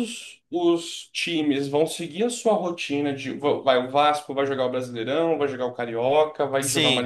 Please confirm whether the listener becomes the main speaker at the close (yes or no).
no